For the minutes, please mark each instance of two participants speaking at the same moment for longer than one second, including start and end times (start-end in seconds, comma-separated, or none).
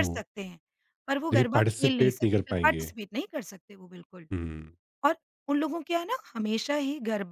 1.3-2.9